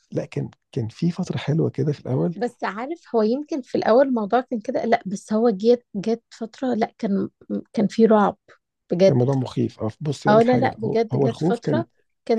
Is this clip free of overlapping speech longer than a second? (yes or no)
no